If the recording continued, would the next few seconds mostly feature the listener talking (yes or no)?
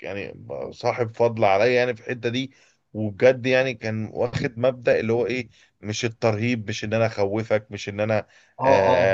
no